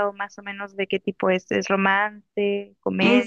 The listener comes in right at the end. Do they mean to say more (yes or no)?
yes